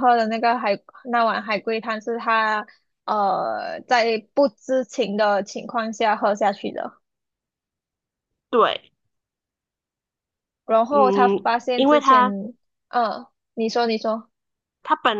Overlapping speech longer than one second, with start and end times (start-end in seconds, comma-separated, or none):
10.9-12.3